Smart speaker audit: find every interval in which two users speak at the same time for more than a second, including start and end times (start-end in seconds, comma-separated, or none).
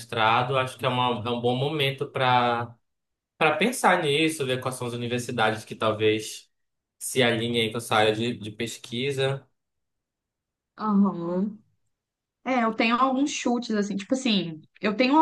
none